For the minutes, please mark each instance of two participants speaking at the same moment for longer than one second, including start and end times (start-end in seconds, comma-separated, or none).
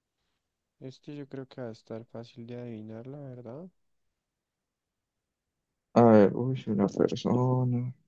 none